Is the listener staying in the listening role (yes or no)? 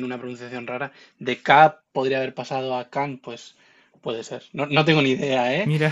yes